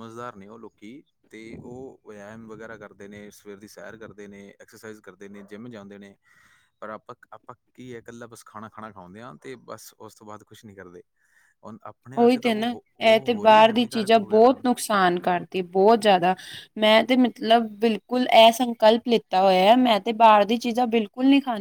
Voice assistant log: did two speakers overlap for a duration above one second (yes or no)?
yes